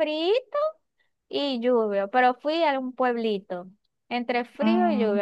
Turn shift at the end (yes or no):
no